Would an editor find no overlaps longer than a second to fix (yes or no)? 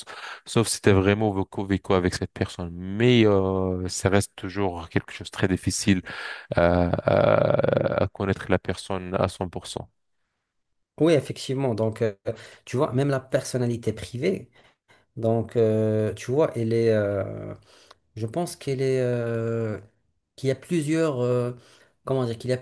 yes